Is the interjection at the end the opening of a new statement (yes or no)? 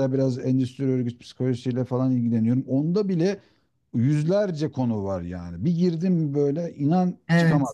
no